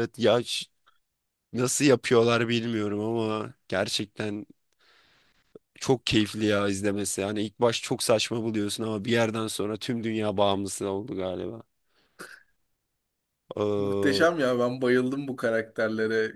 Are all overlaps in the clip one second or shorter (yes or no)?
yes